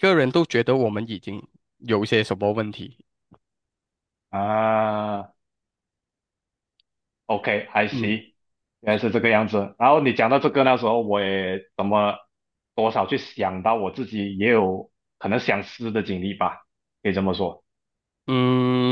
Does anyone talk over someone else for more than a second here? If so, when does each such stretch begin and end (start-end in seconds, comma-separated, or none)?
none